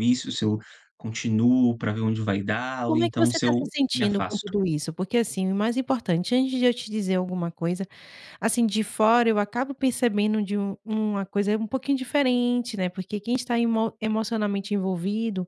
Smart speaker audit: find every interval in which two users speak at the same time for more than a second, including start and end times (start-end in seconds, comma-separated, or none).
2.9-4.5